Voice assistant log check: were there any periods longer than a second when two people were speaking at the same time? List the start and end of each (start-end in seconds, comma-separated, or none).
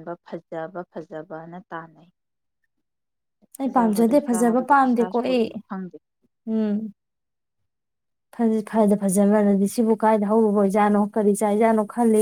3.6-5.5